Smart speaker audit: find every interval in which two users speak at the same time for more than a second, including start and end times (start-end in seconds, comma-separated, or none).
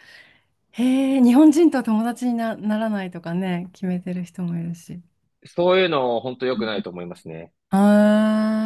none